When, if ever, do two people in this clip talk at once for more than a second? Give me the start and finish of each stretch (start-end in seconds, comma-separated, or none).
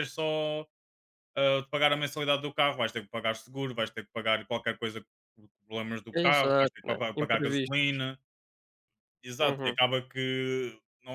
6.1-8.0